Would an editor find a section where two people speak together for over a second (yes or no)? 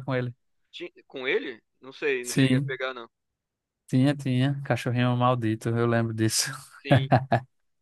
no